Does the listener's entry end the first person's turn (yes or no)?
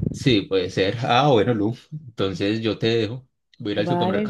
yes